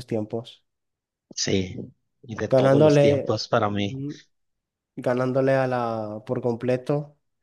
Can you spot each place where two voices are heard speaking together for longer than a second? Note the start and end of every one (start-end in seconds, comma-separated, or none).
2.5-3.9